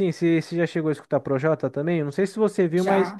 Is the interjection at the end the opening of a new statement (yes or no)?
no